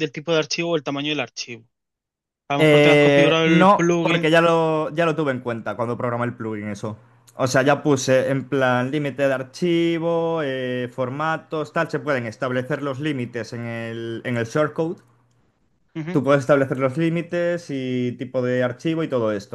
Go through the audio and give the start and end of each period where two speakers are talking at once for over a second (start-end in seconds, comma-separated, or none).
2.6-4.3